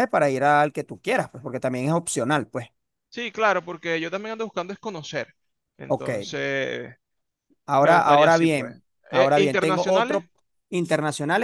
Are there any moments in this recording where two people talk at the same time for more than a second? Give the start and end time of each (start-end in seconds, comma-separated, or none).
7.8-10.2